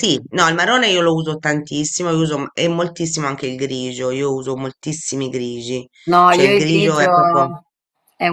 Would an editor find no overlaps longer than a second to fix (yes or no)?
no